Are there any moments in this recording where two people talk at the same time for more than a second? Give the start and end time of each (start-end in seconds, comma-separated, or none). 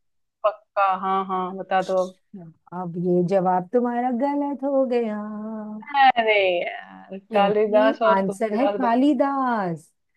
7.3-9.0